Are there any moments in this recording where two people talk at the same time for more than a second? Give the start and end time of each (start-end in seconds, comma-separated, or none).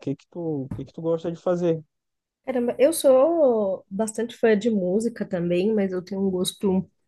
none